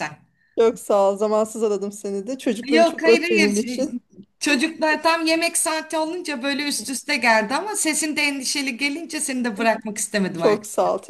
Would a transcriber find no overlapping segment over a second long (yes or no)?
no